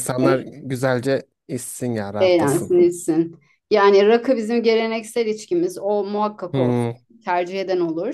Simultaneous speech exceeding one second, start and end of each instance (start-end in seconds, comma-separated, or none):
none